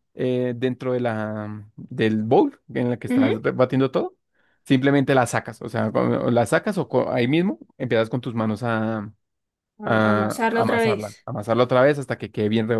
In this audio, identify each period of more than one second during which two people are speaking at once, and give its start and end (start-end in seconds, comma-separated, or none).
9.8-11.3